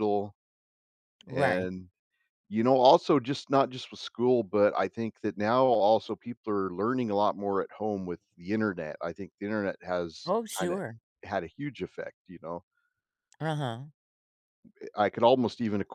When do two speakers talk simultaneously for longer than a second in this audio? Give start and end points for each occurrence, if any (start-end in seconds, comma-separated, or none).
none